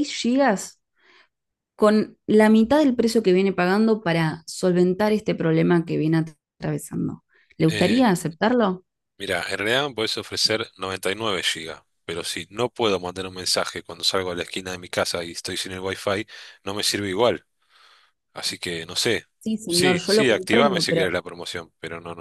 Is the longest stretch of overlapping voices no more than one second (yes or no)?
no